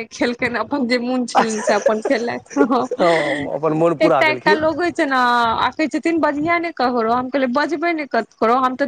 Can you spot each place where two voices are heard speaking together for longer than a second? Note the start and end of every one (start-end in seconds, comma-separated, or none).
none